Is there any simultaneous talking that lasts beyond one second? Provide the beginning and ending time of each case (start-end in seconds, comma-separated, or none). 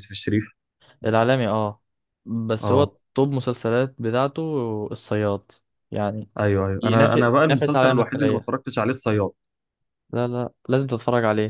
6.8-8.5